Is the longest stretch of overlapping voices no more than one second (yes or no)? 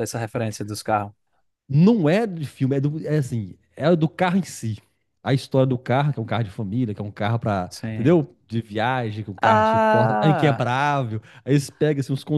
no